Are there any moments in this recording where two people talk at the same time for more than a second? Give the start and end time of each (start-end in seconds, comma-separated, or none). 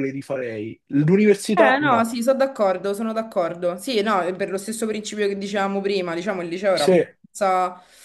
none